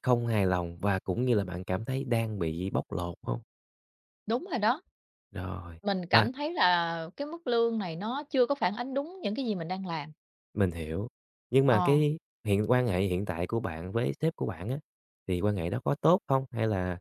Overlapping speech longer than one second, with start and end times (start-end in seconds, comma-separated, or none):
none